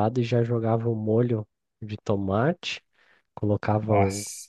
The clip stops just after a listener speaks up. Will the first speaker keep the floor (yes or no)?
yes